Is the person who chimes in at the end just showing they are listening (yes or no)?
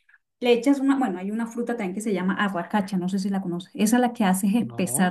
yes